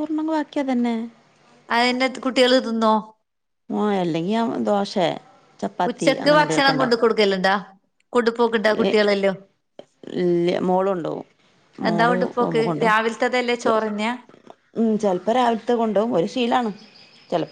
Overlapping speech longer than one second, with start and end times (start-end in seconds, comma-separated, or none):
none